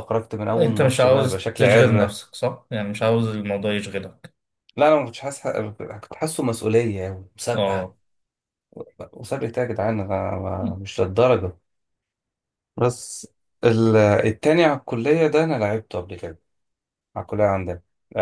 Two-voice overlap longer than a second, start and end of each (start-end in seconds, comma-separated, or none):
0.6-2.2